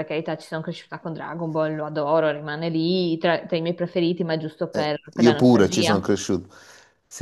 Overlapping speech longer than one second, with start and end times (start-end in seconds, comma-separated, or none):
4.7-6.1